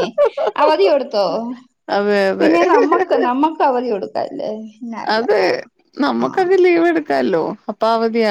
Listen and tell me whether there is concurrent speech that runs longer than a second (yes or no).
no